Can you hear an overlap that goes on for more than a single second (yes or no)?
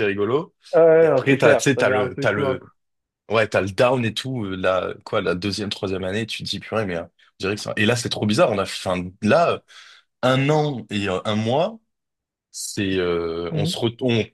yes